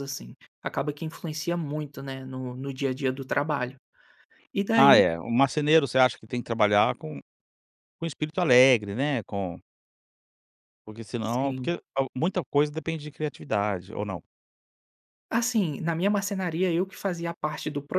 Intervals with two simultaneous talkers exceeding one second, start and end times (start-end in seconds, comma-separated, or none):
none